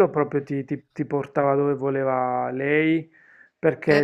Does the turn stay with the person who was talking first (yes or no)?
yes